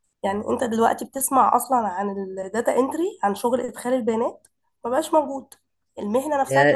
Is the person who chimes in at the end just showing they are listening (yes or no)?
no